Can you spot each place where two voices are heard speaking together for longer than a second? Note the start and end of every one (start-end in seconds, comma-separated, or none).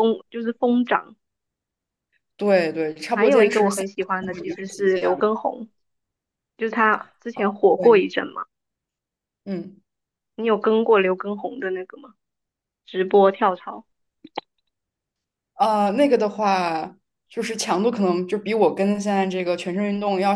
3.1-5.3